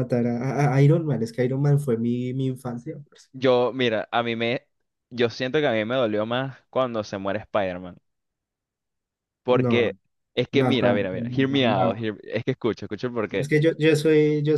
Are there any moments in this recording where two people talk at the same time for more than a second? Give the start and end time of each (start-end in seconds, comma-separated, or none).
10.5-12.1